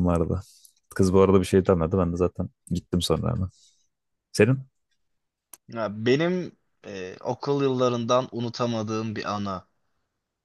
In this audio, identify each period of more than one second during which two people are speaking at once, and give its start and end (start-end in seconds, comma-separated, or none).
none